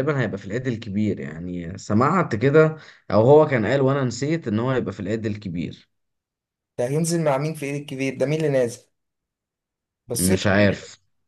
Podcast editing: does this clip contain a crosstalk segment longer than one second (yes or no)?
no